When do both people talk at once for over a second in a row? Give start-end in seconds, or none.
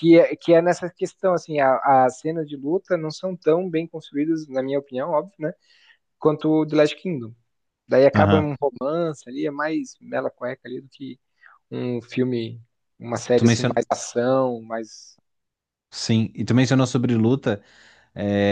none